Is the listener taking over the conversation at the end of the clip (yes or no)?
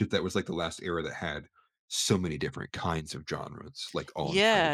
yes